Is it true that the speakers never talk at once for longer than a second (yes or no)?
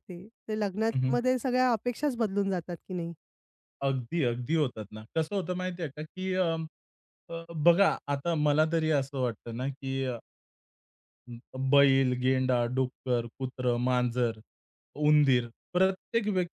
yes